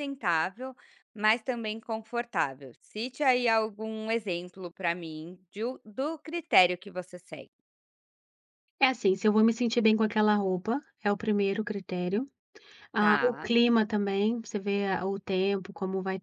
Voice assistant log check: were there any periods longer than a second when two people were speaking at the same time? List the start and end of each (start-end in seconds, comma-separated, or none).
none